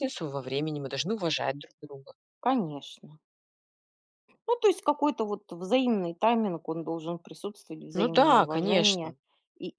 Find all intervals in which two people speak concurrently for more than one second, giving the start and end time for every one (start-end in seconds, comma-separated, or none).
7.9-9.1